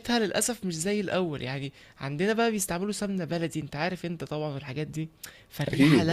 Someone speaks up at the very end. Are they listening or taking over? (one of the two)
listening